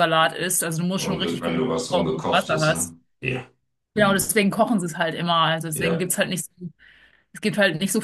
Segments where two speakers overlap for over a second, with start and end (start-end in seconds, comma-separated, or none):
1.0-3.0